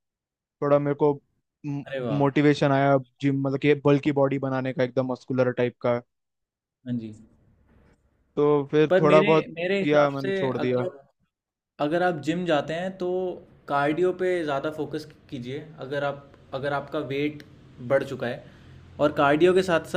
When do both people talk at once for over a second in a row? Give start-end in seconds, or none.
8.9-10.9